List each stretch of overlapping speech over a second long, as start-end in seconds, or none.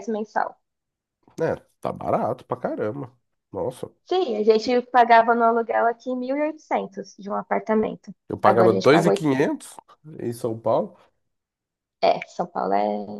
8.3-9.6